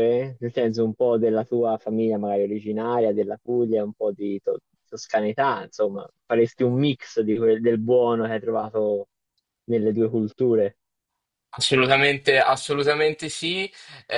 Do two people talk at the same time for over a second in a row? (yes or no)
no